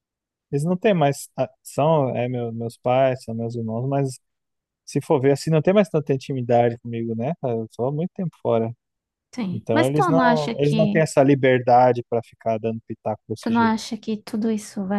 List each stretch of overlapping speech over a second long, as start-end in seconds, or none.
9.5-11.0